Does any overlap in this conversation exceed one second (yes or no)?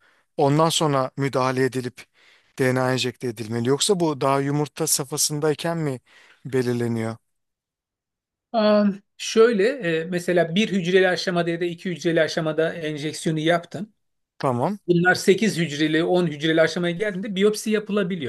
no